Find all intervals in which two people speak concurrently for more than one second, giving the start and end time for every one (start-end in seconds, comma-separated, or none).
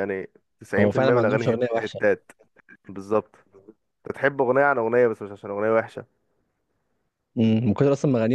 0.8-2.0